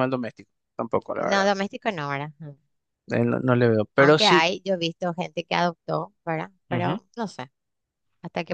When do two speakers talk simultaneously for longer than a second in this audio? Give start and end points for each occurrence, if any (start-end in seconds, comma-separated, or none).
none